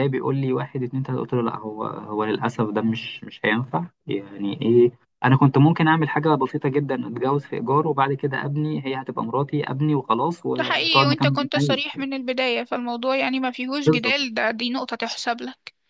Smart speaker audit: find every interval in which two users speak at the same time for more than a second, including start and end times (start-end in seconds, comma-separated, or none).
10.6-11.9